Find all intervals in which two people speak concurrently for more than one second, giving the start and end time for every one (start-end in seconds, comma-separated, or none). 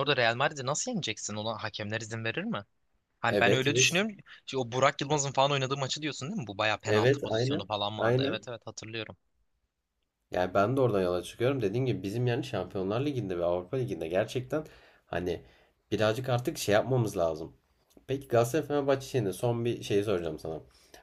6.8-8.4